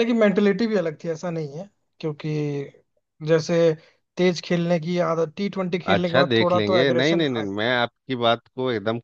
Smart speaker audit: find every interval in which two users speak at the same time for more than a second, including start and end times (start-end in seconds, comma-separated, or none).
5.9-7.5